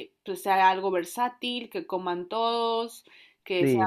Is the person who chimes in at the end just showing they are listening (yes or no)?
no